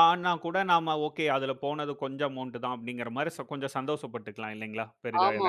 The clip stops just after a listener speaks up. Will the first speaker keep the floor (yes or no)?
no